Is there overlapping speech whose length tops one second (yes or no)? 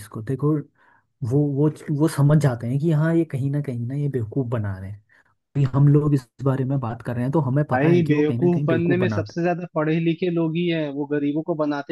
yes